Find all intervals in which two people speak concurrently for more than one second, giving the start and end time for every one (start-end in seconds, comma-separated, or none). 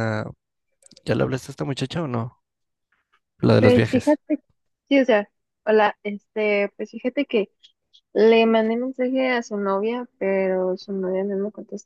none